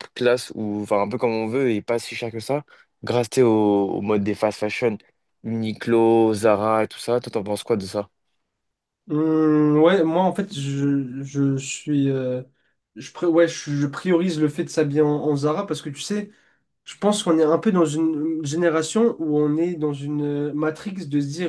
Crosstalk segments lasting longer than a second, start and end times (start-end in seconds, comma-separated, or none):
none